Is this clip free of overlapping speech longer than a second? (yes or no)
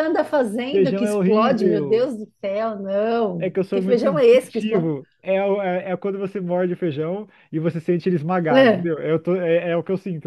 no